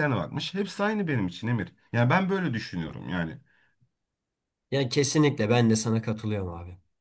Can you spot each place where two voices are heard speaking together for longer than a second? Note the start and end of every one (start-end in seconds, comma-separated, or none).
none